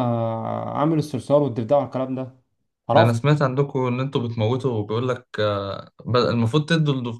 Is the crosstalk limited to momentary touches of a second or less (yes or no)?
yes